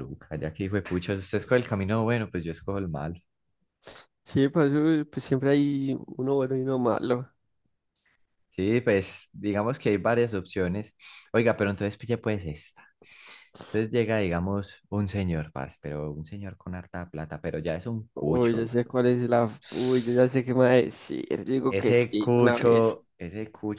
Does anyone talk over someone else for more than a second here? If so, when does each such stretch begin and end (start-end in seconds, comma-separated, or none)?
21.7-23.0